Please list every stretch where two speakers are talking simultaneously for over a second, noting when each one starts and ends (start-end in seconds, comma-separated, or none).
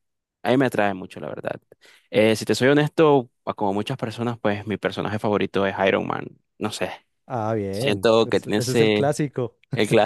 7.7-9.0